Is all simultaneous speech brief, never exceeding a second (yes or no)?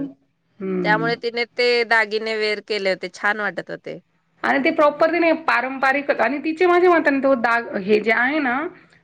yes